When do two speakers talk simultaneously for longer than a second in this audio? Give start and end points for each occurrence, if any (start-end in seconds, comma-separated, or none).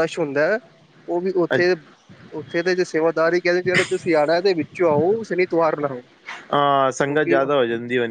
none